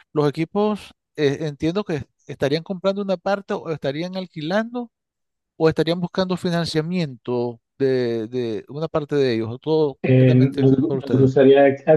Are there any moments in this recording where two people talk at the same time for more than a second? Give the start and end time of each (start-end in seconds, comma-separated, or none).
10.0-11.3